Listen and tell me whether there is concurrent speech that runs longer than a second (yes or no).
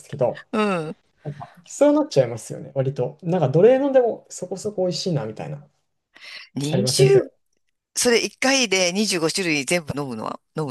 no